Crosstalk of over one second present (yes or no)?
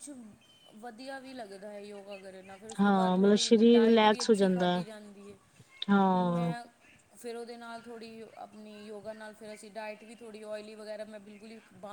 yes